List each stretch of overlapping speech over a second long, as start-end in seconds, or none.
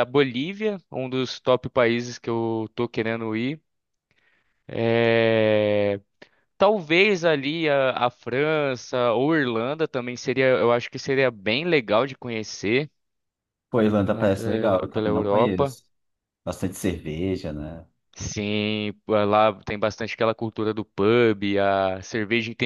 14.1-15.8